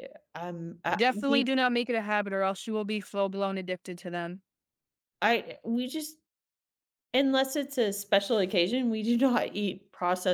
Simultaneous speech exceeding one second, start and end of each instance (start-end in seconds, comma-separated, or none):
none